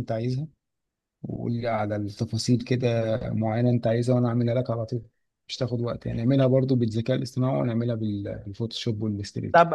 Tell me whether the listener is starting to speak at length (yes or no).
yes